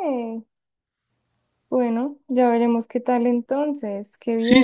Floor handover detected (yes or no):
yes